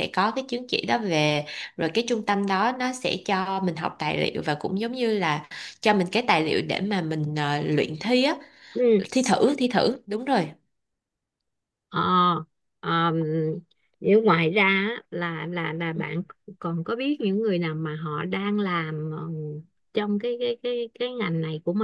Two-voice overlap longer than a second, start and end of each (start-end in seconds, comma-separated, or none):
none